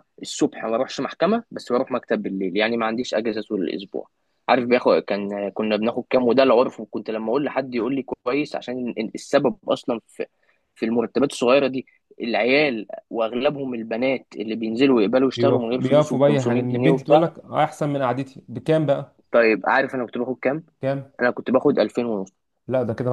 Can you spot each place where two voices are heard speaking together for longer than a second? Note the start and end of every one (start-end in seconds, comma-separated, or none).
15.2-17.2